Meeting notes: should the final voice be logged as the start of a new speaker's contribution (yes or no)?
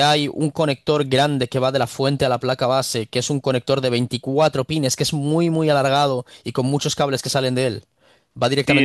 yes